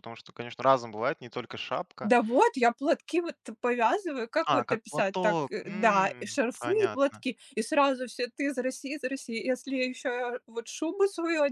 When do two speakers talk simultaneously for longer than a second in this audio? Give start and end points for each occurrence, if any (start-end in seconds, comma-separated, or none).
4.5-7.2